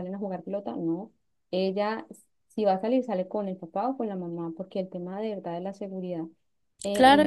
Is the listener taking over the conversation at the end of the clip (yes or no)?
yes